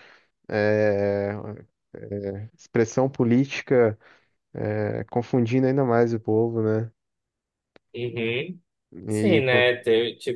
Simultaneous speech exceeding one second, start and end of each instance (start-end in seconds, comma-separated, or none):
none